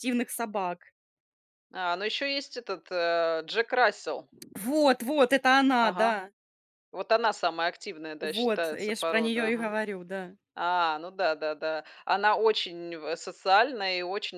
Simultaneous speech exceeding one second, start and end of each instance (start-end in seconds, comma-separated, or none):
8.2-9.8